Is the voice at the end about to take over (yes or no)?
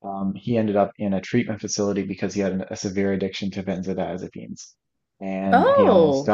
no